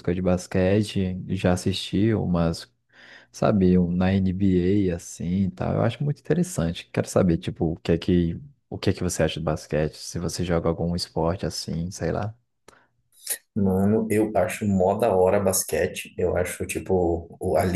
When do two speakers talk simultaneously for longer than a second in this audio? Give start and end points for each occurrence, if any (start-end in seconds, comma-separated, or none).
none